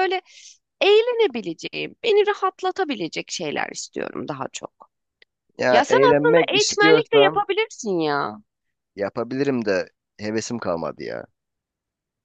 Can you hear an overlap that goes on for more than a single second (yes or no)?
yes